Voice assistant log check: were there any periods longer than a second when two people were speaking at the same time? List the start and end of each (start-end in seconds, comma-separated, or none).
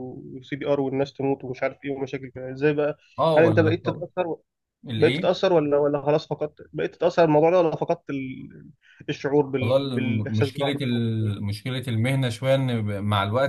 9.6-11.1